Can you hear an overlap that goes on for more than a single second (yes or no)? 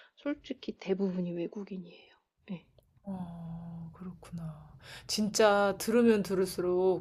no